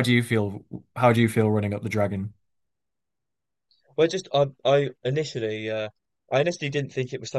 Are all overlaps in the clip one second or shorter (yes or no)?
yes